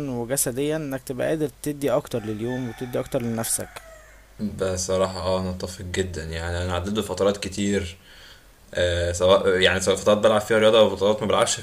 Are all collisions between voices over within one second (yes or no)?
yes